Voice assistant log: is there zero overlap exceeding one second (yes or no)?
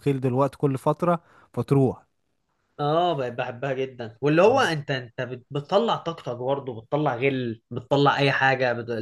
yes